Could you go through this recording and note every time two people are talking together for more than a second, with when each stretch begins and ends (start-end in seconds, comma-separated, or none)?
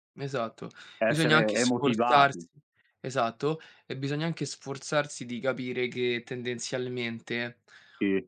1.1-2.4